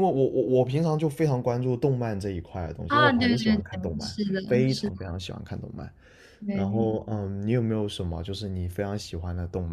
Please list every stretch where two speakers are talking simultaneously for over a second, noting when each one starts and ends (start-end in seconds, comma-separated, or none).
2.9-5.0